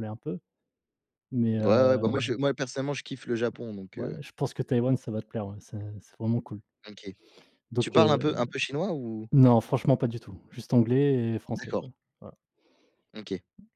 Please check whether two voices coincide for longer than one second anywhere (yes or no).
no